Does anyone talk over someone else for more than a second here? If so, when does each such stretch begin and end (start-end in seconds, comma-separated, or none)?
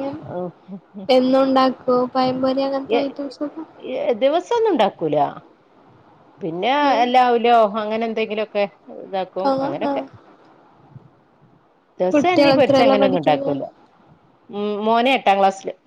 12.1-13.5